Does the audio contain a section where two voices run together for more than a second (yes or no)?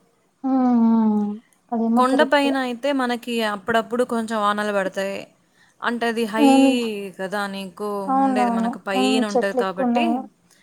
yes